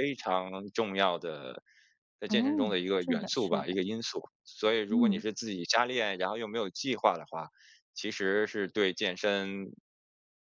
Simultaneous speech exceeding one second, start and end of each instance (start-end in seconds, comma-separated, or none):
2.3-3.8